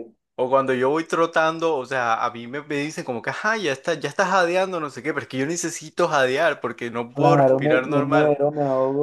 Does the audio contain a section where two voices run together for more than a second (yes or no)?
yes